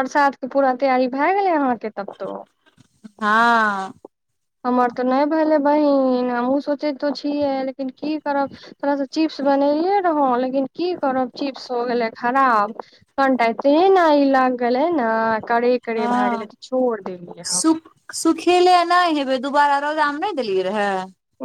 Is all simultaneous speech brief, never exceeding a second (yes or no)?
yes